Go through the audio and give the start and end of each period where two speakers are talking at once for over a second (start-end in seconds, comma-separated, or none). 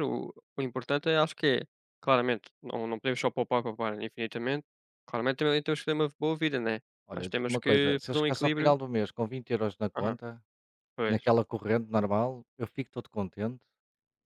7.1-8.8